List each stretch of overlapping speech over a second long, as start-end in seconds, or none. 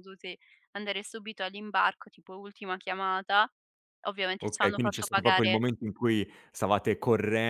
4.4-5.6